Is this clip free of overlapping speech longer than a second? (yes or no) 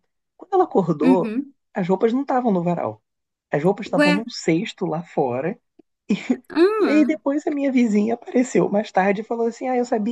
yes